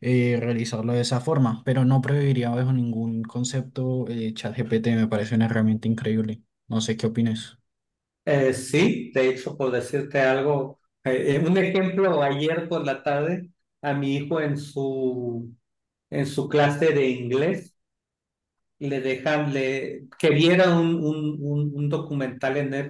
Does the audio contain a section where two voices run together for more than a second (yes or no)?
no